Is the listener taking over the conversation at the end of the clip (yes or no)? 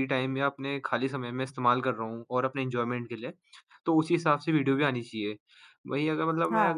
no